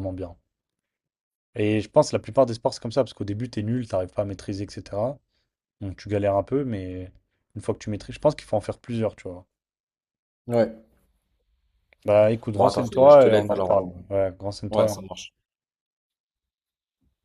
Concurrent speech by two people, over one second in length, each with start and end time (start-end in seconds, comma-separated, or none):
12.5-13.7